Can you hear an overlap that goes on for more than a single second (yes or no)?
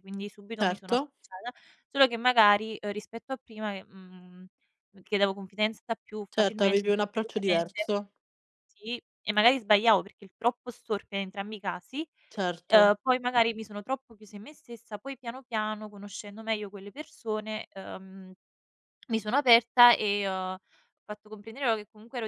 yes